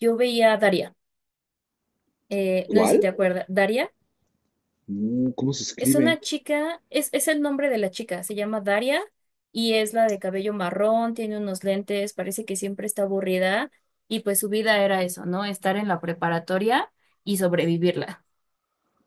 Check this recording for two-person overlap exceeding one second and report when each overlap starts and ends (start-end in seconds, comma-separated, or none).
none